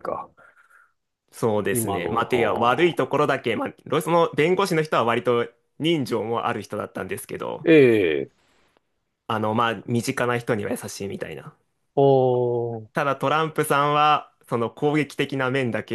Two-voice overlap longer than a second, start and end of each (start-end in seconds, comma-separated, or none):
1.7-3.0